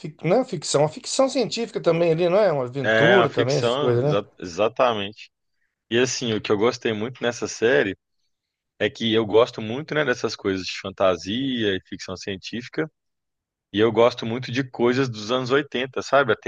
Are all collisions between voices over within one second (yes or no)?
no